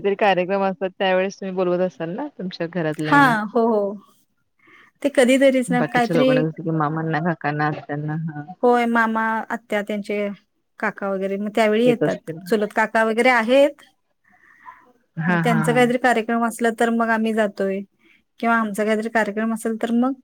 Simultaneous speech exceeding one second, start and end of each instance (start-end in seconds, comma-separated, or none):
none